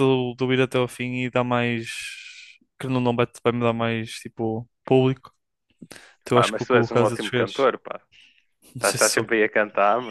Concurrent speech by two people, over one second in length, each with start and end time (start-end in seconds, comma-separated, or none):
6.3-7.7